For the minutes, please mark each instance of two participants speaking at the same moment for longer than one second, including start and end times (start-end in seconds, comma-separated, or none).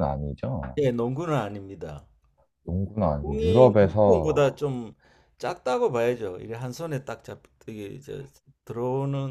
3.2-4.5